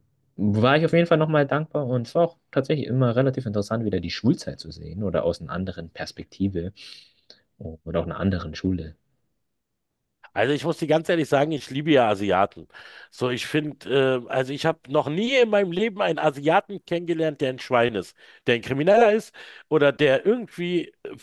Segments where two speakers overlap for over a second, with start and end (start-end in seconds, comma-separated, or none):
none